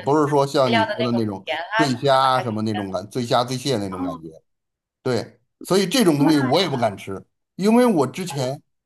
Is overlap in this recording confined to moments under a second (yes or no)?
no